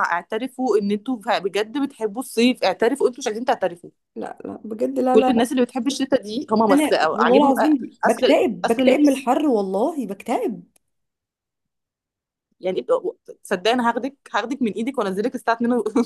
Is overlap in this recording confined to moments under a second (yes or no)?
no